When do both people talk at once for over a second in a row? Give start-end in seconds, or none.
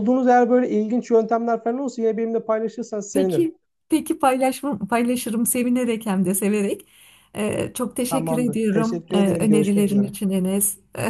8.1-10.1